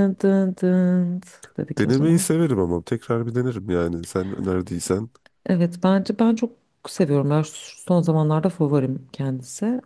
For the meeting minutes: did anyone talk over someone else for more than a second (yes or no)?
no